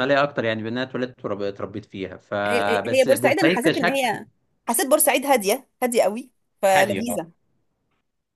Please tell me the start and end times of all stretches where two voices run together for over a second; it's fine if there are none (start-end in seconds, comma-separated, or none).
2.5-4.2